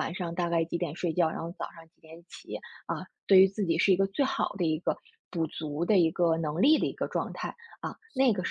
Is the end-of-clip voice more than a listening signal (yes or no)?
yes